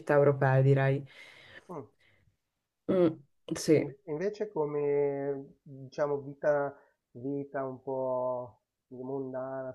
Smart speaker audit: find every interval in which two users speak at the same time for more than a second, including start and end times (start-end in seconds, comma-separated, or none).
none